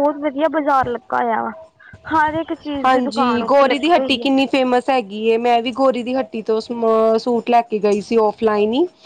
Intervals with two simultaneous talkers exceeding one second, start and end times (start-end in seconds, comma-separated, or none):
2.8-4.3